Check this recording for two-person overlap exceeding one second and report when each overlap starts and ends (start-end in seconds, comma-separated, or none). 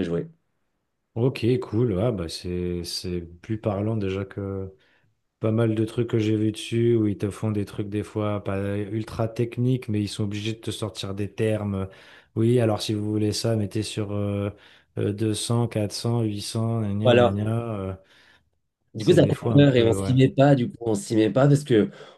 19.0-20.2